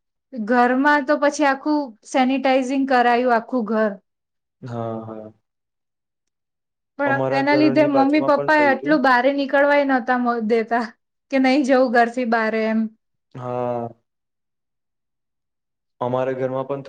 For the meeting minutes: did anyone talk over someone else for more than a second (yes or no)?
yes